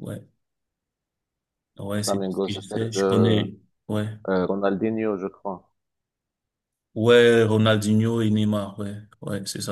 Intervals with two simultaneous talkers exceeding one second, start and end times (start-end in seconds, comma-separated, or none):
1.9-3.4